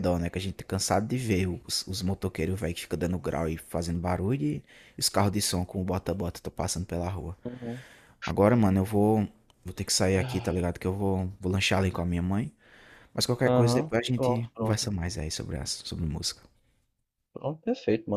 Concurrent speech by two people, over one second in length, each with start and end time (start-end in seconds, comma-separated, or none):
13.4-14.9